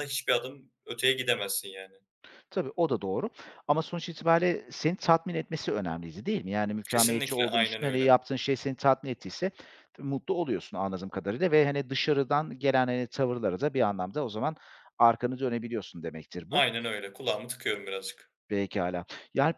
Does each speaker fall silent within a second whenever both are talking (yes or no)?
no